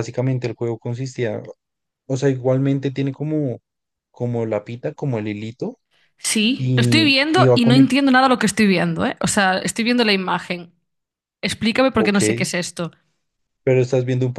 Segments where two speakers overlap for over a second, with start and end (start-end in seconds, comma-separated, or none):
6.6-7.9